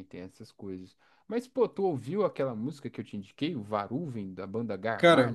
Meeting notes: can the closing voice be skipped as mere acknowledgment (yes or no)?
no